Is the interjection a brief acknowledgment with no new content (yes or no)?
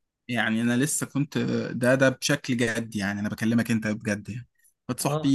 yes